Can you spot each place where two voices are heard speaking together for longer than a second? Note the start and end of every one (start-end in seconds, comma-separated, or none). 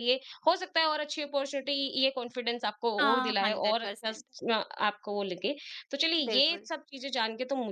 3.0-4.2